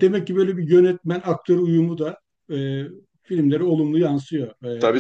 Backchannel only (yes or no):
no